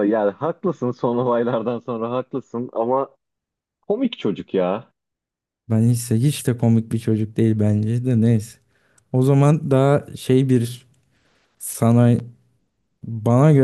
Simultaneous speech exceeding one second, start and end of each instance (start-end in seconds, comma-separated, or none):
none